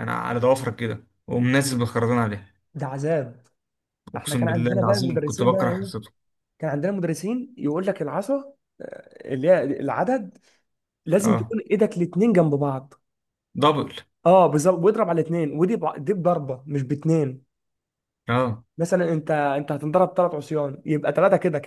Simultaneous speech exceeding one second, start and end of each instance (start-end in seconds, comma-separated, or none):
4.2-5.9